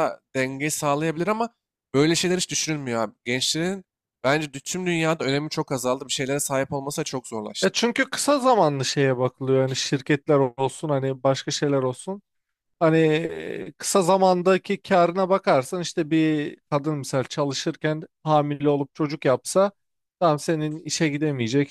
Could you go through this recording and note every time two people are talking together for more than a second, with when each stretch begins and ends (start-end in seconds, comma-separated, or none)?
none